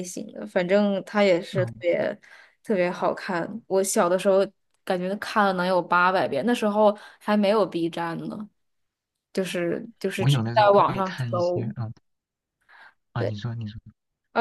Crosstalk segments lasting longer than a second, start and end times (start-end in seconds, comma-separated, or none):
10.2-11.7